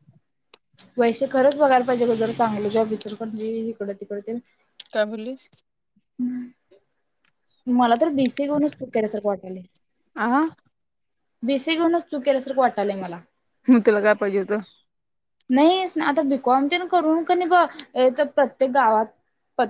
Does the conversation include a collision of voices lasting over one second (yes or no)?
no